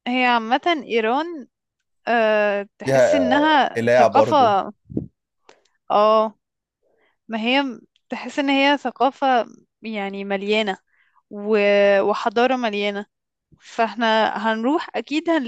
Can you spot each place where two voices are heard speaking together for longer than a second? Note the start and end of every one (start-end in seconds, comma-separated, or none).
2.8-4.3